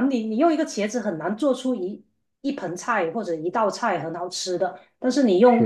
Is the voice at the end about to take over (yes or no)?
no